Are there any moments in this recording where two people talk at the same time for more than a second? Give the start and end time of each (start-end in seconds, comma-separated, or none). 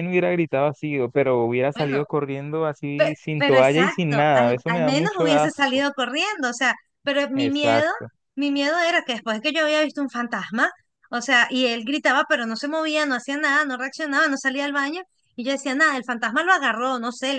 3.0-5.8